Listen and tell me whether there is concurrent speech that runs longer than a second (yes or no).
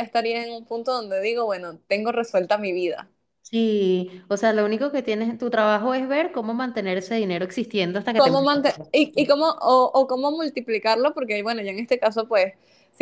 no